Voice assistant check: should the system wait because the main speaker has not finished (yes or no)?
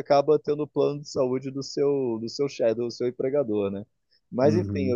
no